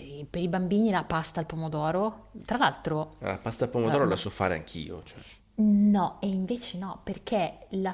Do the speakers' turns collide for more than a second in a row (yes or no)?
no